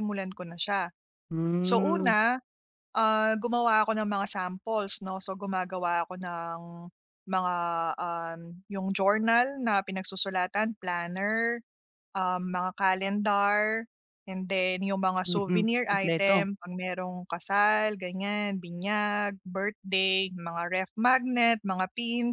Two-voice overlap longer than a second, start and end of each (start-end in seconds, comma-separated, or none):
15.2-16.5